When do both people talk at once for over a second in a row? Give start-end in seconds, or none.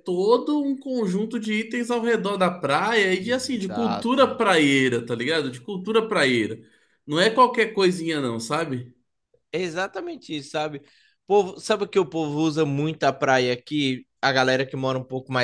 3.2-4.4